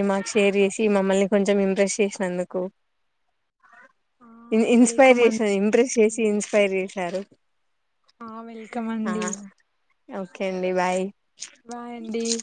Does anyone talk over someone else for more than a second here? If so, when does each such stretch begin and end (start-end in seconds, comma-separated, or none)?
4.8-6.2